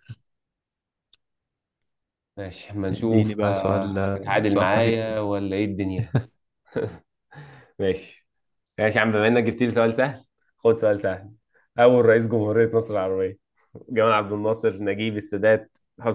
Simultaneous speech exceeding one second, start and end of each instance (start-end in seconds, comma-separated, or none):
2.9-5.2